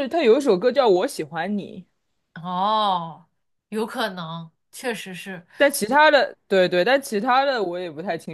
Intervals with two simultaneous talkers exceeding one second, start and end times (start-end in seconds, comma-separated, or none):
none